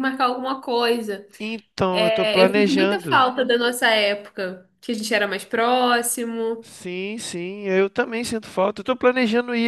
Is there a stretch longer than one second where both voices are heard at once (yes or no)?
yes